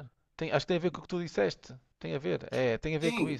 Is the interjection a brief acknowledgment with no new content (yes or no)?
no